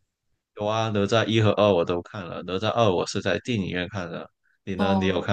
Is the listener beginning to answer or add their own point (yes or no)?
yes